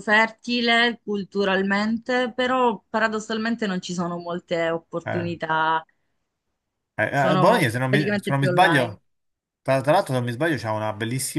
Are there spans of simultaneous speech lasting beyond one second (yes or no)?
yes